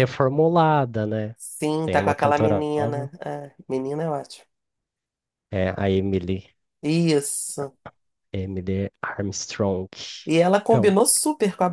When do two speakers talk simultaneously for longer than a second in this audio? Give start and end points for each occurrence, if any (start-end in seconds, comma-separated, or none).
1.9-3.1